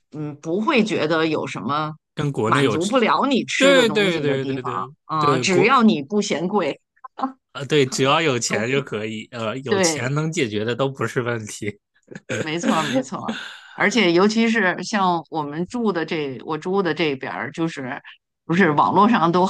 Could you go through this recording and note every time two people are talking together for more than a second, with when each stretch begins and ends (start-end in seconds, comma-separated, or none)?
3.6-5.7